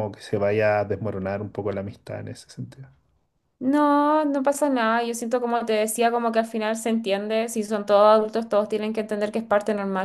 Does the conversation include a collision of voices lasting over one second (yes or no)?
no